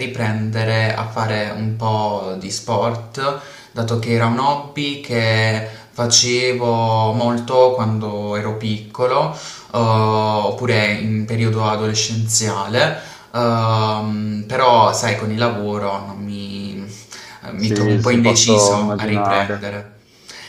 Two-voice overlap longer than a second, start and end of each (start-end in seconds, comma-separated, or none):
17.5-19.7